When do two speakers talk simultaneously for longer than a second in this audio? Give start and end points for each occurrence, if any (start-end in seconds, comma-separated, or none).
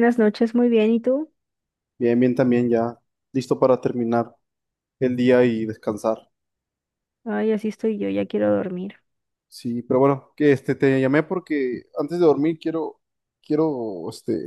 none